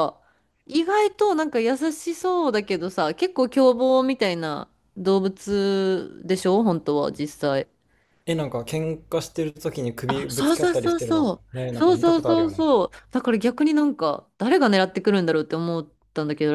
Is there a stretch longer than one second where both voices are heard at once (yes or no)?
yes